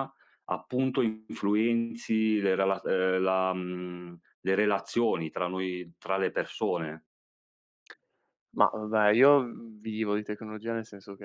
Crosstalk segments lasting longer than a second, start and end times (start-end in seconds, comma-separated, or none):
none